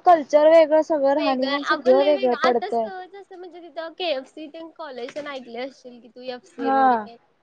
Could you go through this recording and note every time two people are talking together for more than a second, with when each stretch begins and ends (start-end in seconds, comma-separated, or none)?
1.1-2.9